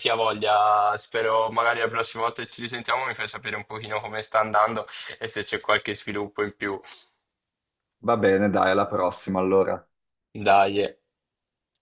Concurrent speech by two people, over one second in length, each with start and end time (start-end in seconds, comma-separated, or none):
none